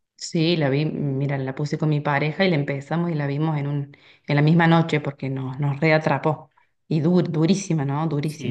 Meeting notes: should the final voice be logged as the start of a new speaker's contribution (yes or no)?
yes